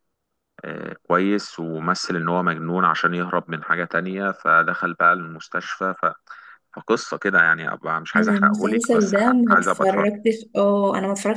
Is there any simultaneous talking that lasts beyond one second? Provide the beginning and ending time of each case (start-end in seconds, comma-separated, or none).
8.2-10.1